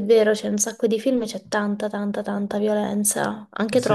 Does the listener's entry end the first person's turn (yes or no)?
no